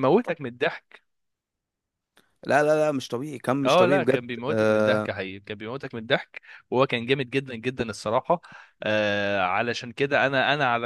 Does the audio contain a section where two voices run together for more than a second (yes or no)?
yes